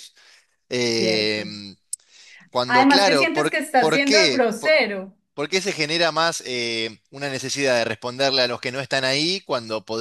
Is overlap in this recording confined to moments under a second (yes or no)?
no